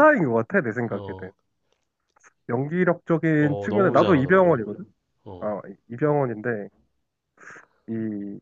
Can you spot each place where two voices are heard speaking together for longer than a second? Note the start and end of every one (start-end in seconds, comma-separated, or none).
3.4-4.7